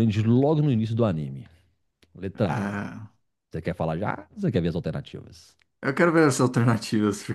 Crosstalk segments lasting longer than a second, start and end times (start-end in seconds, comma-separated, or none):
none